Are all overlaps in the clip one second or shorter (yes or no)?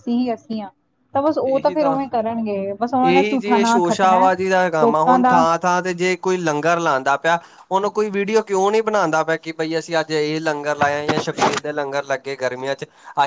yes